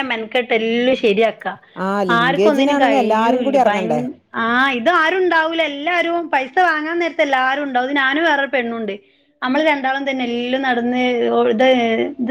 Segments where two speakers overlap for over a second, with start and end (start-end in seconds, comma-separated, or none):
2.2-3.8